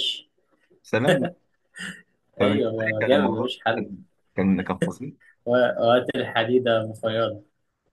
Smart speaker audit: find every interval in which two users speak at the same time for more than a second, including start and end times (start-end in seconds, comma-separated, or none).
2.4-3.9